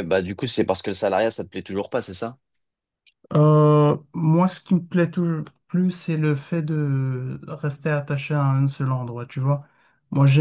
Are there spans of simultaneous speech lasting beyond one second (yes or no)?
no